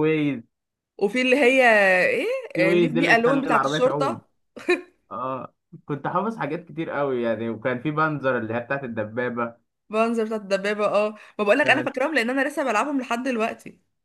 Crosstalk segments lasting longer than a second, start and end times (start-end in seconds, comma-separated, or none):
2.5-4.2